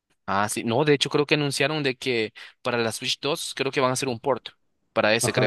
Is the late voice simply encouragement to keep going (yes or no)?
no